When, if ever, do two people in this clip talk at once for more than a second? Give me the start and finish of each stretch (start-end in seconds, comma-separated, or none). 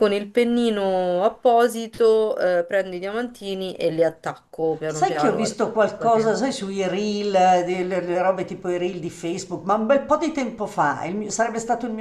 4.9-6.4